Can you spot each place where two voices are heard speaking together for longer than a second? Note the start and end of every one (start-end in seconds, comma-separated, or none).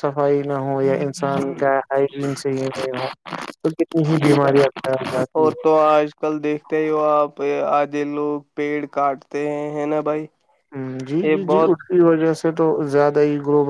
none